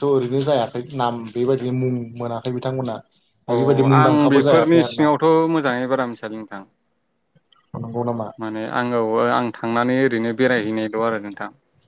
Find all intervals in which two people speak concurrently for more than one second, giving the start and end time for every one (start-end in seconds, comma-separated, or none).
none